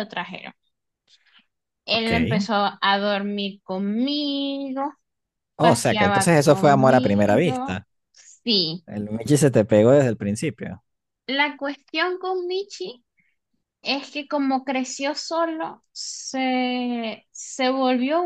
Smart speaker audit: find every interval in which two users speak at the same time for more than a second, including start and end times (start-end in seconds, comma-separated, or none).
5.6-7.9